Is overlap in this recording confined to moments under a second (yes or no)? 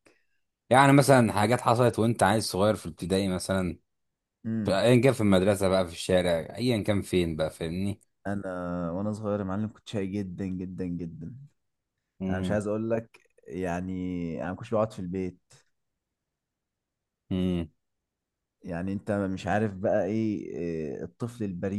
yes